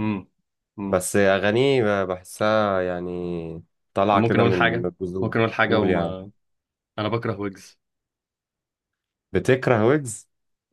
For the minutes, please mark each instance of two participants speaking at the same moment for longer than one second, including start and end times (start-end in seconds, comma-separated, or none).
4.1-6.2